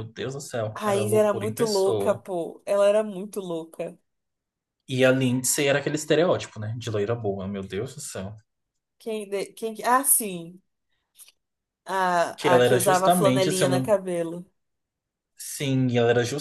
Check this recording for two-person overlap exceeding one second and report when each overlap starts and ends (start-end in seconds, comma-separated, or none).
0.7-2.2, 12.4-14.0